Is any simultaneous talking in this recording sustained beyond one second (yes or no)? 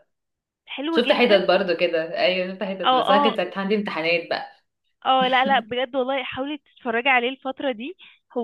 no